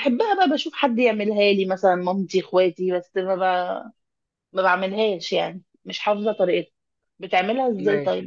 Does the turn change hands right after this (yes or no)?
no